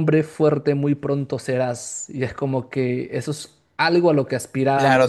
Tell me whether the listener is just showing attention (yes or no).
no